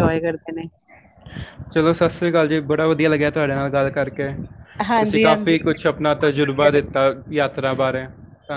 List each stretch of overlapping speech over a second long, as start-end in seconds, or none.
5.0-7.0